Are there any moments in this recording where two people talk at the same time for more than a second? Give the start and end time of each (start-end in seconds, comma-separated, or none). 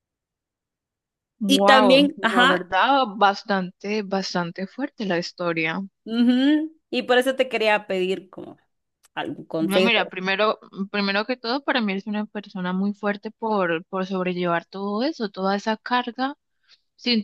1.5-2.7